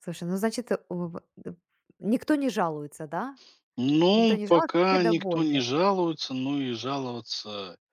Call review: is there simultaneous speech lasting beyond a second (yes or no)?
yes